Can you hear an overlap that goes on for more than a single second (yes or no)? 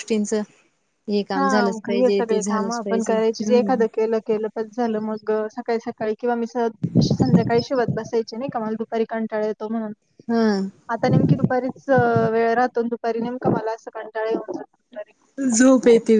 yes